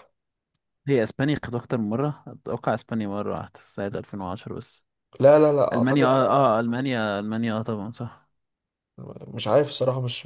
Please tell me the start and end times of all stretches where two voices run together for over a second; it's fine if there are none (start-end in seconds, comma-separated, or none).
none